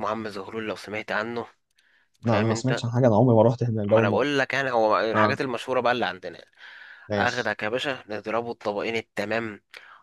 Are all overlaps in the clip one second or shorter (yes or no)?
yes